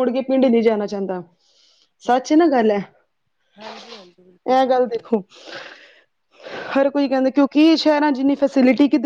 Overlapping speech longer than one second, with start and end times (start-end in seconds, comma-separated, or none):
none